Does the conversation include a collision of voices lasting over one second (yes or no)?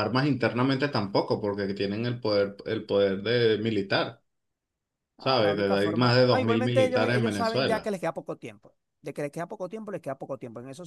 yes